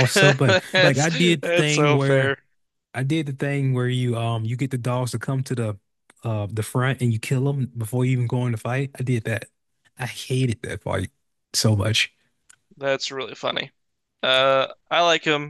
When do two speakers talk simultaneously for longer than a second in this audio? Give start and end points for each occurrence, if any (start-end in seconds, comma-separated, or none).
0.7-2.4